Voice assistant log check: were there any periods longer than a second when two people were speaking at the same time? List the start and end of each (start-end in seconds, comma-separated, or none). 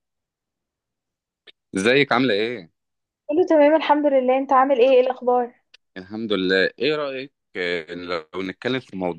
none